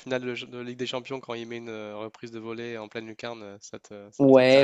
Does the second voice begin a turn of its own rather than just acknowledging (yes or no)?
yes